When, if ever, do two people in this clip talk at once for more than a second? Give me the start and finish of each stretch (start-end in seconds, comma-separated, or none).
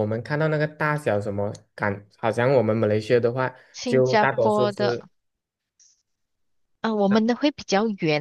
3.7-5.0